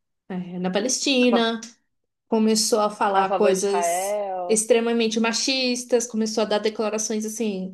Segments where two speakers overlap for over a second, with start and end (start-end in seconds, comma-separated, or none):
3.1-4.6